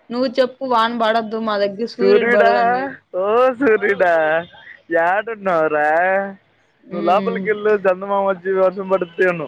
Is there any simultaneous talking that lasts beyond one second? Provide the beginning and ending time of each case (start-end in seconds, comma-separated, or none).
none